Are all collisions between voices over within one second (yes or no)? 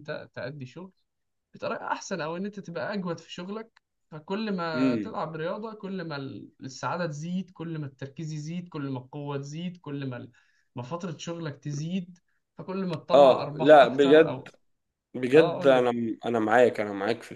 no